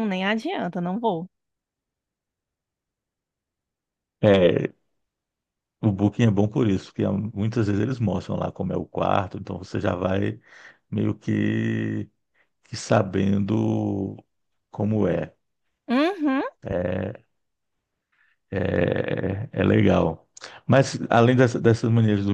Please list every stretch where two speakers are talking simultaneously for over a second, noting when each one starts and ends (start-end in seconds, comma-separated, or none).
none